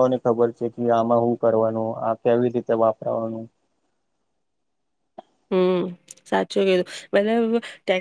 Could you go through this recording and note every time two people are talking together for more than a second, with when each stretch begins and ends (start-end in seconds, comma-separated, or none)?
none